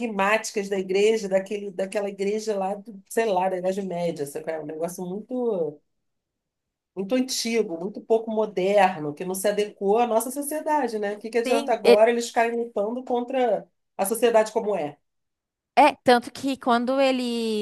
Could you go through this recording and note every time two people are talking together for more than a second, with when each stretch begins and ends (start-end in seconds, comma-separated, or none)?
none